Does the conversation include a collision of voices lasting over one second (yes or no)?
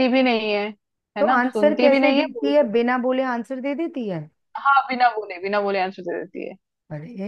yes